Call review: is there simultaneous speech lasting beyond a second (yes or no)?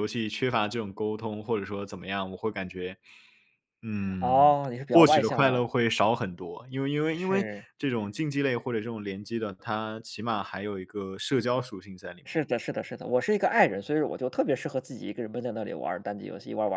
yes